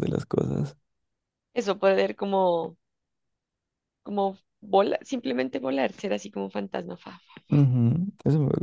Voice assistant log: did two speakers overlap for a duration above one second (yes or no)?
no